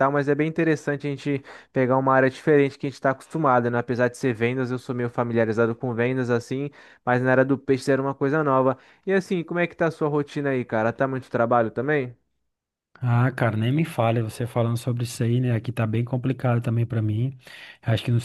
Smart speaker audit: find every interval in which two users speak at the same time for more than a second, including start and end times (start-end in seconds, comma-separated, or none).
none